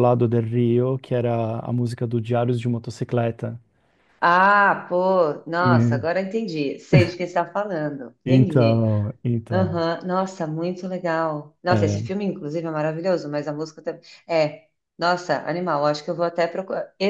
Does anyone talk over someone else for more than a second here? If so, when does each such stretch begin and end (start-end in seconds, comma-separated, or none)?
none